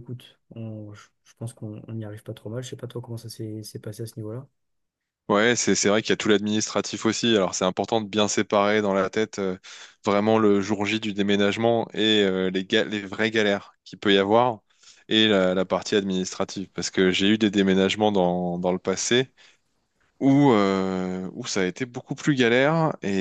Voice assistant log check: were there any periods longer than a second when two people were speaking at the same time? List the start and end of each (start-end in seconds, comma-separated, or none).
none